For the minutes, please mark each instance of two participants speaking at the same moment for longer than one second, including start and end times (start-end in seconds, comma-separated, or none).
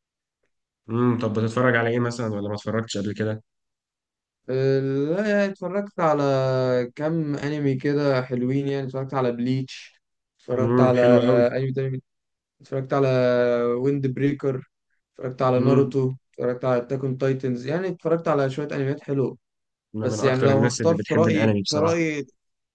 20.0-22.0